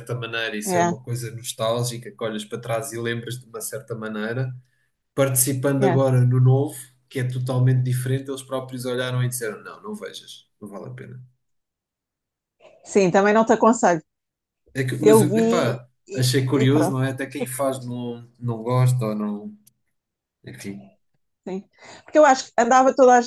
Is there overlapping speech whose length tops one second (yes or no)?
yes